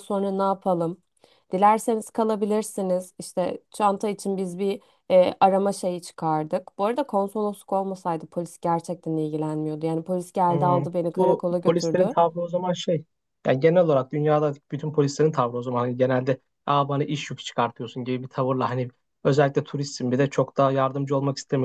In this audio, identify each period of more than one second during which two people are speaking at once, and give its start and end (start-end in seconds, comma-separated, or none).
10.5-12.1